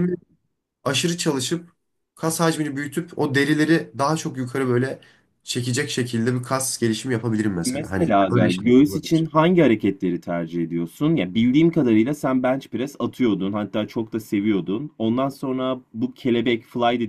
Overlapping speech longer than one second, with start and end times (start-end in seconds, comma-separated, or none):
7.7-9.3